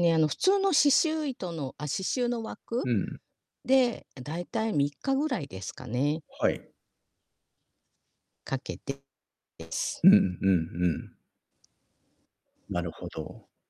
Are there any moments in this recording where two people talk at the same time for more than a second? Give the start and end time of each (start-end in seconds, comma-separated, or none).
none